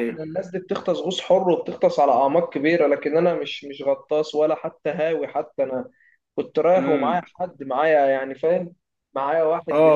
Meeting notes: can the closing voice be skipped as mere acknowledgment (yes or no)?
no